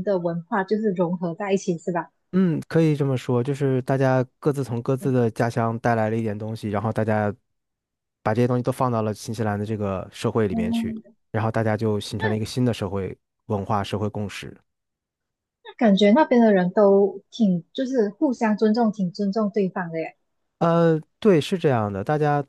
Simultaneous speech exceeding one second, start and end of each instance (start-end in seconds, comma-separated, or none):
none